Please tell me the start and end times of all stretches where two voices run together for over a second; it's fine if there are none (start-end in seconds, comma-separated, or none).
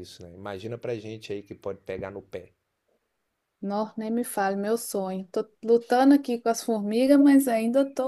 none